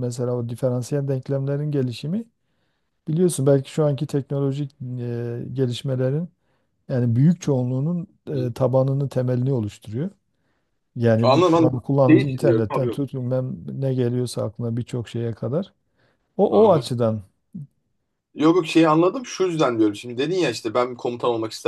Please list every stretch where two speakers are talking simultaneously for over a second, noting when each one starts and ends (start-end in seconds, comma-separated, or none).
11.2-13.0